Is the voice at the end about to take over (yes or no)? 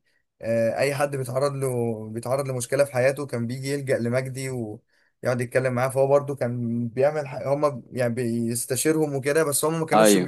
no